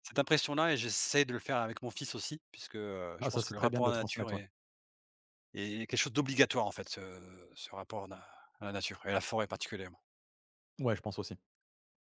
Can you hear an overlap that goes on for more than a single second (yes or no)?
yes